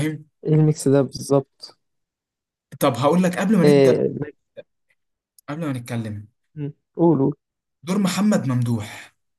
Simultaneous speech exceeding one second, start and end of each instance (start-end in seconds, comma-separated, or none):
none